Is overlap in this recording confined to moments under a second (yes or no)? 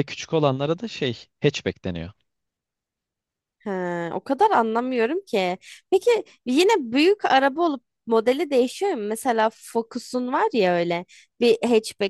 yes